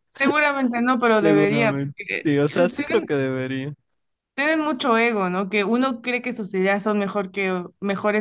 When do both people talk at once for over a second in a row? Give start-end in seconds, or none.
1.2-2.9